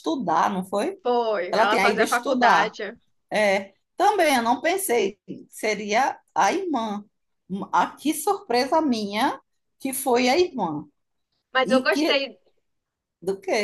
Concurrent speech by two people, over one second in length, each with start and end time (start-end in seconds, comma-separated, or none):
1.5-2.7